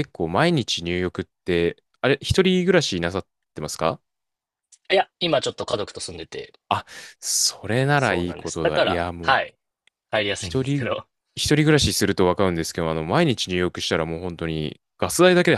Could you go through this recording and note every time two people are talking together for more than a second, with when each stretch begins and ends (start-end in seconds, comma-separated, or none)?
7.9-9.4